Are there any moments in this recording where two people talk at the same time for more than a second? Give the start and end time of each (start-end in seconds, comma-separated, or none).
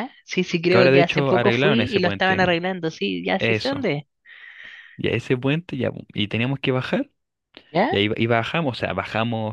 0.7-2.6